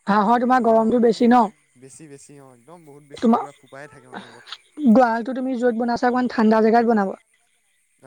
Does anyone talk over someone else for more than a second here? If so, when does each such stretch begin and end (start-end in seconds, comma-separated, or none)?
none